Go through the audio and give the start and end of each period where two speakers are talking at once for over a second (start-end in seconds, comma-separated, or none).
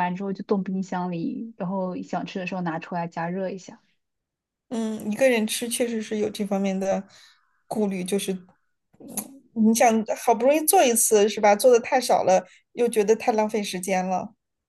none